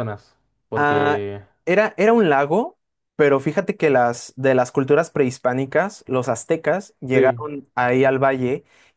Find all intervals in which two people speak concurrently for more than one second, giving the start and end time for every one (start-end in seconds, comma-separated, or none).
none